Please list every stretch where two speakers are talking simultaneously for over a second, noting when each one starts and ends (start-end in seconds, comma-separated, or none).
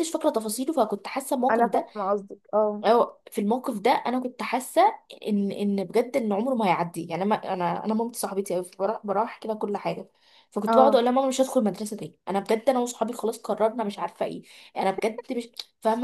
none